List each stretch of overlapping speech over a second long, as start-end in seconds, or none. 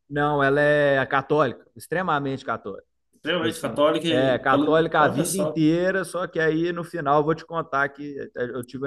3.2-5.6